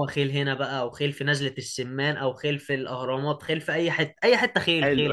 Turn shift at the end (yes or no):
yes